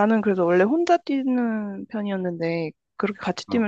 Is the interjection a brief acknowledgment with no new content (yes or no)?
yes